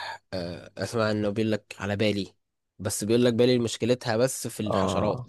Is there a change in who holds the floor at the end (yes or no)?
yes